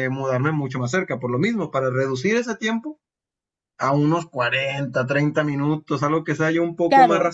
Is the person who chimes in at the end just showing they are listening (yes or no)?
no